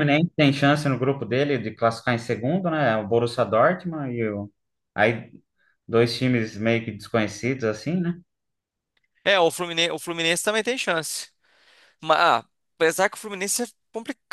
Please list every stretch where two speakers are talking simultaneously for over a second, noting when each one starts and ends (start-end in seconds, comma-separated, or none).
none